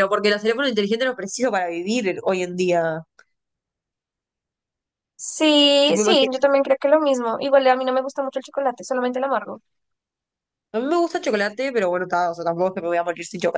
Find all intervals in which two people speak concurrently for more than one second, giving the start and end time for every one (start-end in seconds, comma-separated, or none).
none